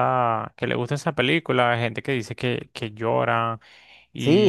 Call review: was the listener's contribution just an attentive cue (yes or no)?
no